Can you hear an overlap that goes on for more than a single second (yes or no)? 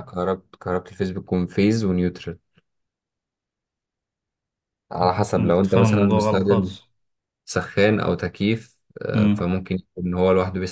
yes